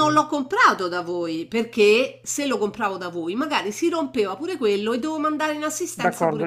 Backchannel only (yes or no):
no